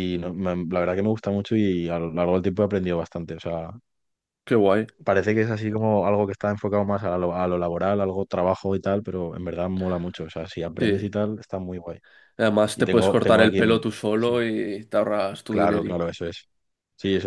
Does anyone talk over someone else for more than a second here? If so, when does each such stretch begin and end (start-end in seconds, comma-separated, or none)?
12.8-14.4